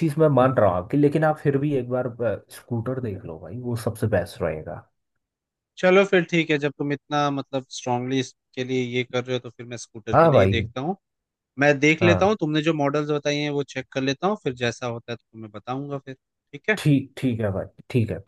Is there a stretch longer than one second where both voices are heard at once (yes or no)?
no